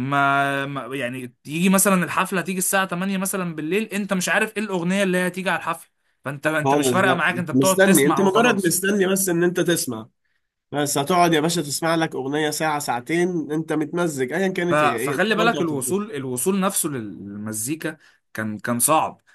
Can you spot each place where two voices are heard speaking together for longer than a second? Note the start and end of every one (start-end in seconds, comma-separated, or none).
6.6-8.8, 14.7-16.0